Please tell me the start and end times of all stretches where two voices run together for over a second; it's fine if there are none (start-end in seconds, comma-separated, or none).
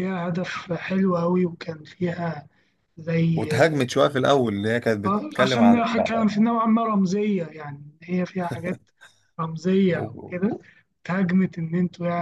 5.0-6.2